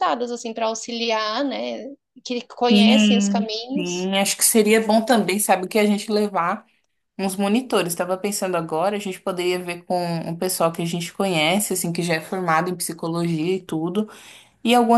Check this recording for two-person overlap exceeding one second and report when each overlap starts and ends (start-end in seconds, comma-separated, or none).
2.7-4.1